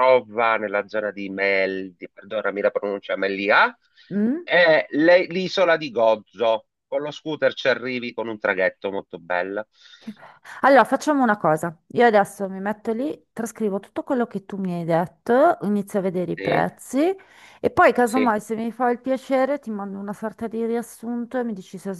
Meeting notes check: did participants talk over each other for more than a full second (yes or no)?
no